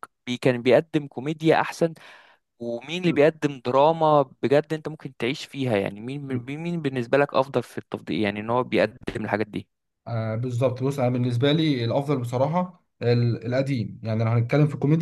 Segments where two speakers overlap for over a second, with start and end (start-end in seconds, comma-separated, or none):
none